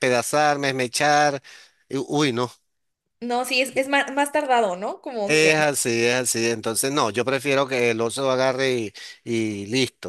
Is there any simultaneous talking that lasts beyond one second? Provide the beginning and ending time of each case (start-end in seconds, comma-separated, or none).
none